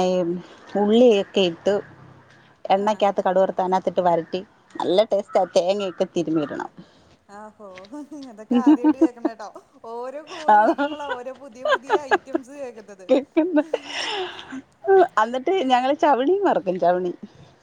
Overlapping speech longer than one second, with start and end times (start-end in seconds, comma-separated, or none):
none